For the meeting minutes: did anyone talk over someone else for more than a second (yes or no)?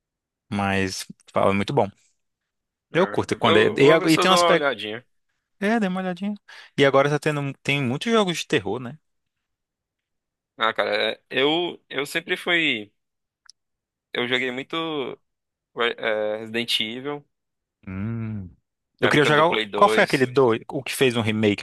yes